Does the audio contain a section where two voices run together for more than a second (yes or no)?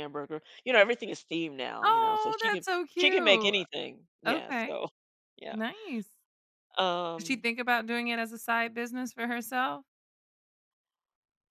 yes